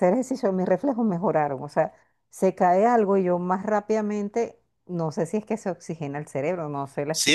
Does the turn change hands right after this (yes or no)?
yes